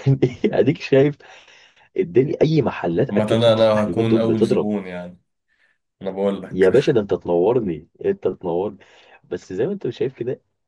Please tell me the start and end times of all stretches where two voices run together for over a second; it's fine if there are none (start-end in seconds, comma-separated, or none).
3.1-4.7